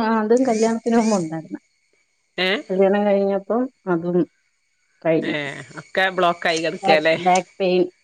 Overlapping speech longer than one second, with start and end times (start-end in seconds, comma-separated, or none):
none